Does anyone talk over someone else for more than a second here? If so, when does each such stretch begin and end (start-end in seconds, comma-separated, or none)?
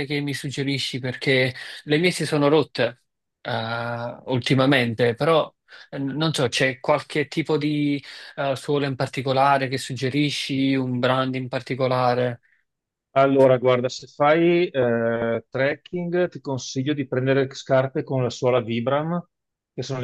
none